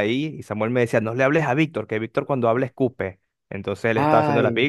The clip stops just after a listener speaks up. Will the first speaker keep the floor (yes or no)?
yes